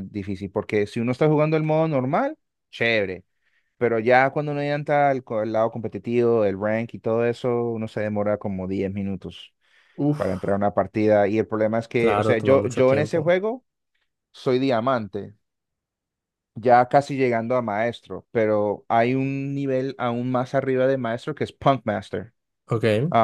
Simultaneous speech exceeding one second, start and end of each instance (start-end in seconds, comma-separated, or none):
12.0-13.3